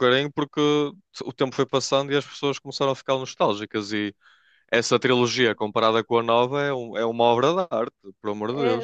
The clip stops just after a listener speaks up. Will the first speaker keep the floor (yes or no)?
no